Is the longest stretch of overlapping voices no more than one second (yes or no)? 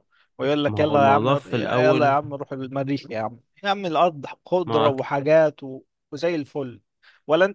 no